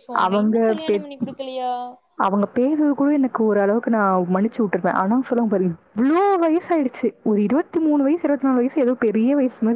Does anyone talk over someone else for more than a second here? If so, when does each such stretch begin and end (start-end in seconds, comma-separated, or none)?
none